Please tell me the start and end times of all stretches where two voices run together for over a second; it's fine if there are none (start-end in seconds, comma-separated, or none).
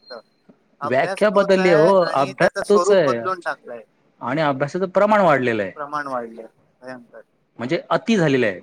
0.9-3.2